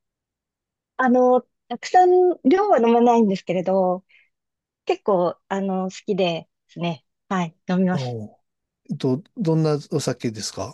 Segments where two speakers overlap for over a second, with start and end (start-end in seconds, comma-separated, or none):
none